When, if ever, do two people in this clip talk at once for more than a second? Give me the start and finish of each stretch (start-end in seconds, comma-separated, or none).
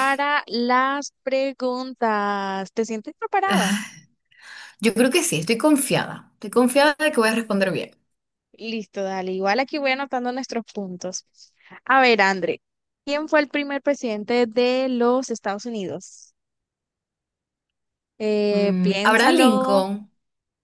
18.5-19.8